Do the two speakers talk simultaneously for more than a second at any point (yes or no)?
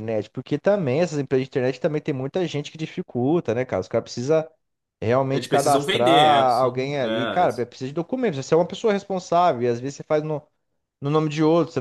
yes